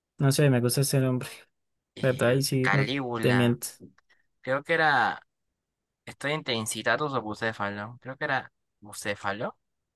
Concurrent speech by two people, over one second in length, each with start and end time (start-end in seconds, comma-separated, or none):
2.0-3.6